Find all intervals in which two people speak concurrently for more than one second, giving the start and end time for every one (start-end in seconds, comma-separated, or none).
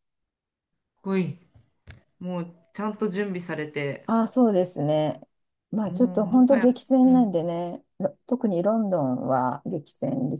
5.8-7.3